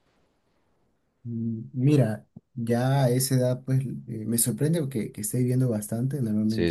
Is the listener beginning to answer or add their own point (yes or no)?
no